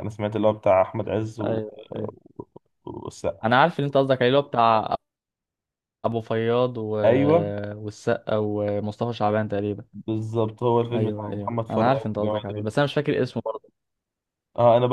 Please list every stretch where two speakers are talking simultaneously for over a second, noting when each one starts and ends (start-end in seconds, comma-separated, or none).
10.9-12.7